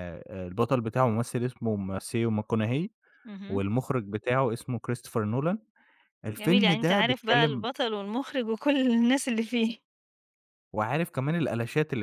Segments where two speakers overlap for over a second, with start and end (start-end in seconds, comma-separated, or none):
6.4-7.7